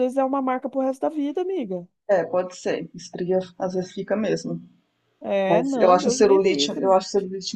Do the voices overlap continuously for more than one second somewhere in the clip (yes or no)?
yes